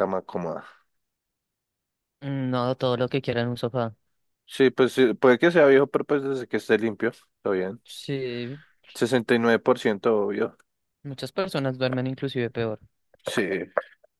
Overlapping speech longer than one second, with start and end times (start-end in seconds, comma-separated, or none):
none